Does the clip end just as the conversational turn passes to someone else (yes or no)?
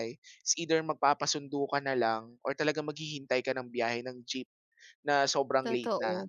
no